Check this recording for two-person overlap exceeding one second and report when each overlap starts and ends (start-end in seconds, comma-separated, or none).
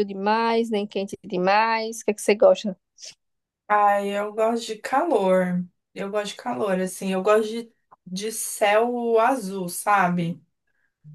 none